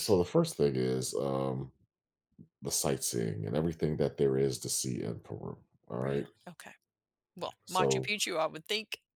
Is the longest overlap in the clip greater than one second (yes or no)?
no